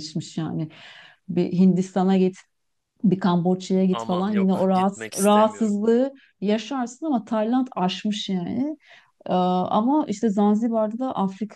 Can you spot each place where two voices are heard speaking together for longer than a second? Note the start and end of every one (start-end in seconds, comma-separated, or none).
3.9-5.8